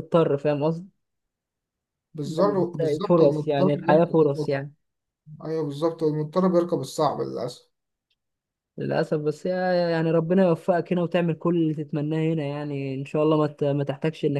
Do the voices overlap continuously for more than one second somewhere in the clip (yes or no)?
yes